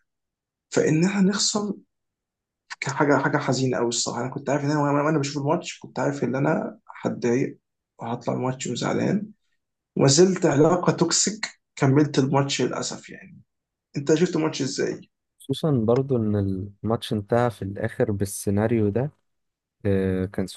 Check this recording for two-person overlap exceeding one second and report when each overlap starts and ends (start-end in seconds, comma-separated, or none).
none